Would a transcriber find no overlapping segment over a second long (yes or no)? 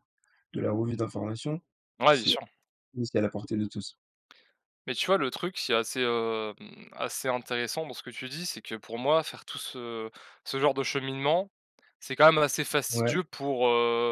yes